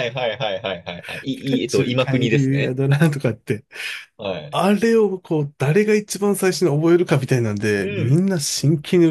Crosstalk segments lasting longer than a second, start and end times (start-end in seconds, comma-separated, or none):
1.4-2.8